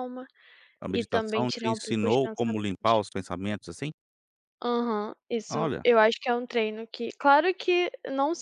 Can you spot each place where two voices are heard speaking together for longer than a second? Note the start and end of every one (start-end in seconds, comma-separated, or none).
0.9-3.0